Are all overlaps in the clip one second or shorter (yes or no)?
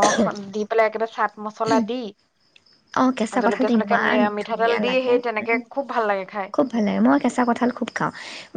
no